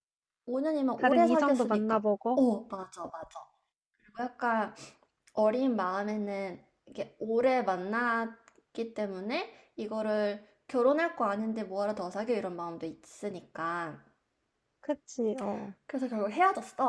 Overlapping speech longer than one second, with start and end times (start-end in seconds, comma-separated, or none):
1.0-2.4